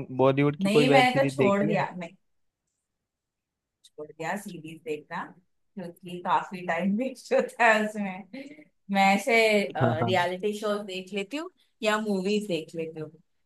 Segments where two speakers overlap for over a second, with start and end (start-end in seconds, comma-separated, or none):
0.6-1.8